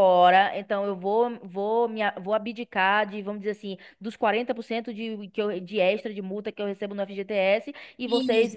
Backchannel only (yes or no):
yes